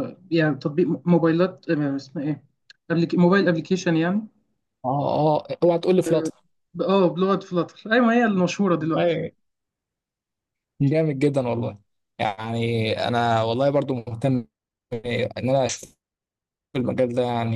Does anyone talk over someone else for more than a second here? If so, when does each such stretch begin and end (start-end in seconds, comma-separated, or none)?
none